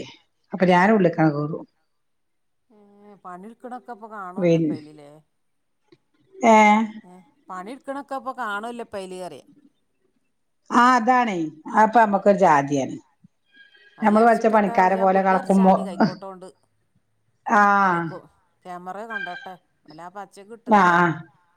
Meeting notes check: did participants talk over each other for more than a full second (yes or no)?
yes